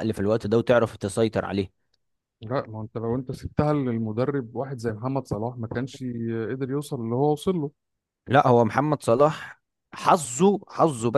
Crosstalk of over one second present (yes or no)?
no